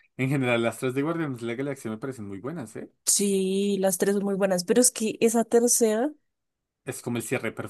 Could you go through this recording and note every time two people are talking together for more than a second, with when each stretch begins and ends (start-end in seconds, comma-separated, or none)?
none